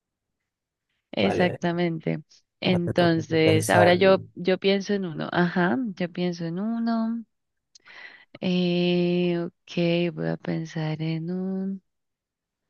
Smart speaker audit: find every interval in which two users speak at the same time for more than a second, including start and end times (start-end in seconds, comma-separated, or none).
2.6-4.0